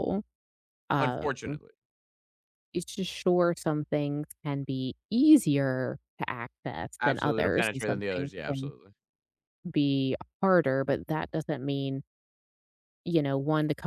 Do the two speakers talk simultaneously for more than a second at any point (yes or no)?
yes